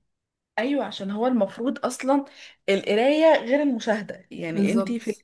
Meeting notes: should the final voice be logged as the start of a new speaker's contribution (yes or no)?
no